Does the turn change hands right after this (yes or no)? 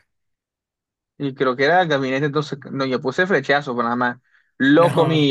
no